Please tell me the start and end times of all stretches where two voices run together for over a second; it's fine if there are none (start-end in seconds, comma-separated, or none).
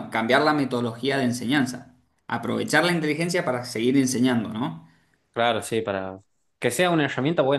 none